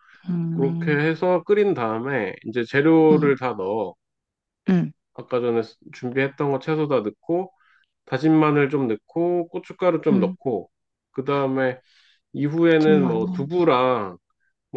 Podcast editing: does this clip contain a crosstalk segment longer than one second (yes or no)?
no